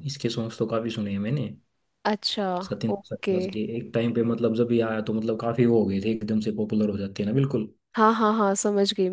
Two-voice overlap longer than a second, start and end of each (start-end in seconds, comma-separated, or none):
none